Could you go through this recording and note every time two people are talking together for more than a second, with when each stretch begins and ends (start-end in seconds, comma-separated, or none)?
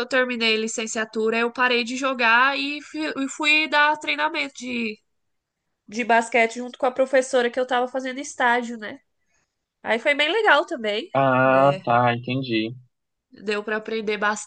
none